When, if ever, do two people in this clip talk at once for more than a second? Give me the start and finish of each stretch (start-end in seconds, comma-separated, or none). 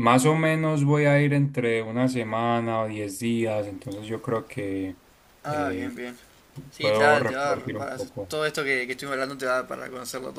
6.8-8.3